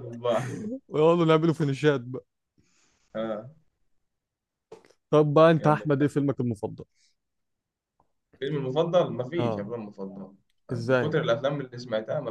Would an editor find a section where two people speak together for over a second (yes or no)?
no